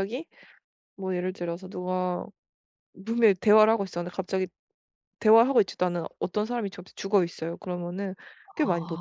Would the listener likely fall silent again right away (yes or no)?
yes